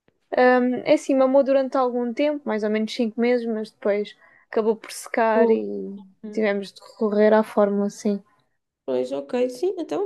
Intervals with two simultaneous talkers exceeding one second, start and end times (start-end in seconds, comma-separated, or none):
none